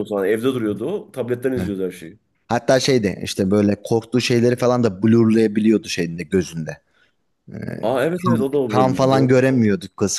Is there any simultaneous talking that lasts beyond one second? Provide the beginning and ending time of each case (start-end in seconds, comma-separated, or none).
8.0-9.3